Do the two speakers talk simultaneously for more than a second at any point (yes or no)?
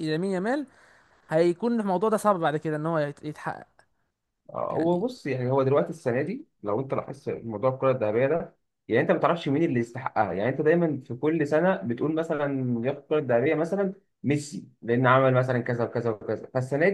no